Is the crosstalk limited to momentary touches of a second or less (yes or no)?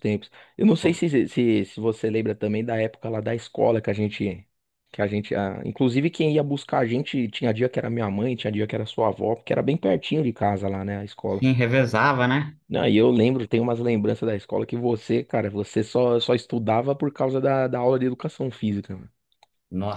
yes